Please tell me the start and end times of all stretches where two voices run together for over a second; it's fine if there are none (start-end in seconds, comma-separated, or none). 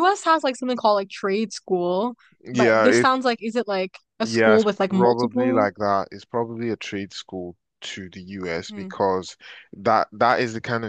4.2-5.7